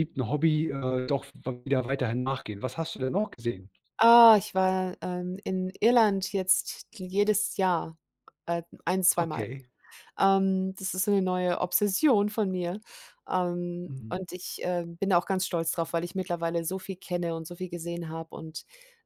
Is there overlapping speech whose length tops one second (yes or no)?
no